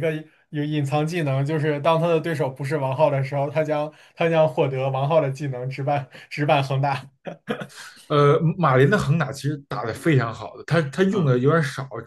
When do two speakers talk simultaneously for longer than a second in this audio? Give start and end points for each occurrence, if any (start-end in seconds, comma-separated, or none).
none